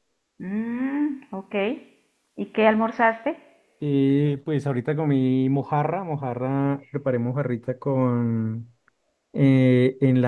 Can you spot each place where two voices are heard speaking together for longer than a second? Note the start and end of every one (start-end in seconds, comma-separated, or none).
none